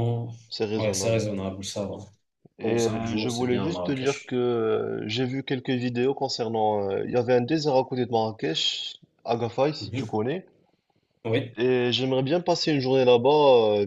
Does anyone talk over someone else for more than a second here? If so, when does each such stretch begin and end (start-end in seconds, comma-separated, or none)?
2.6-4.4